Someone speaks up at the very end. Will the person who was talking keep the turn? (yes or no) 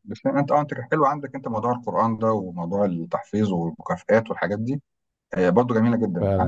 no